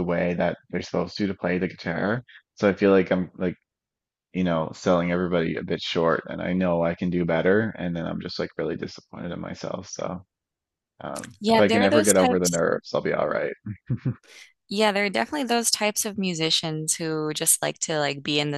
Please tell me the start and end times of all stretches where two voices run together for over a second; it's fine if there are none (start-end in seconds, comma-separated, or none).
11.4-12.6